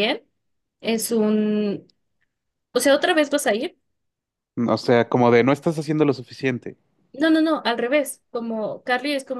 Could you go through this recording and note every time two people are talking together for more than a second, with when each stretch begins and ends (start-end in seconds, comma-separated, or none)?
none